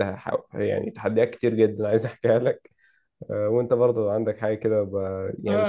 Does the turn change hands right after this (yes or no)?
yes